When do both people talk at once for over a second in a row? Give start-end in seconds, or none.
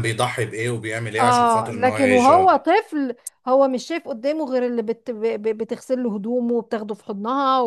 1.2-2.6